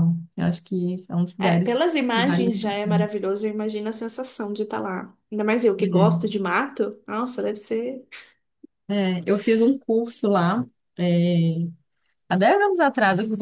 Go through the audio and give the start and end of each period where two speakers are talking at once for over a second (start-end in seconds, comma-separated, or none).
1.4-2.9